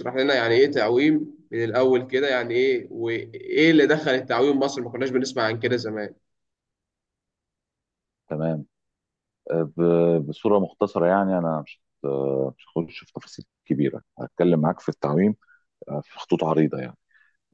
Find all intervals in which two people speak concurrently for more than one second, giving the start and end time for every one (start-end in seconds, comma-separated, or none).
none